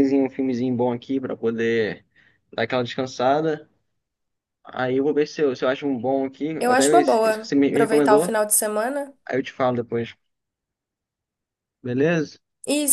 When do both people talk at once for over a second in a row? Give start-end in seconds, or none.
6.6-8.4